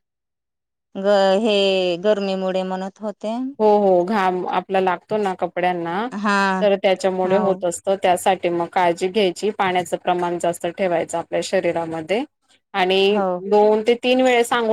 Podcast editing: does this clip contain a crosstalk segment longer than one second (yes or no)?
no